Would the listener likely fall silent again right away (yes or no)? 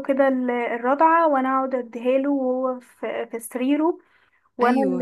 yes